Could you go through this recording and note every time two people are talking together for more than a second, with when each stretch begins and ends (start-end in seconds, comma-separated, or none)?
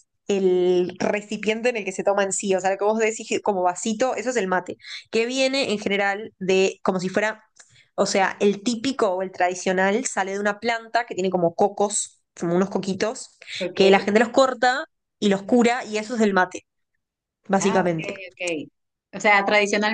none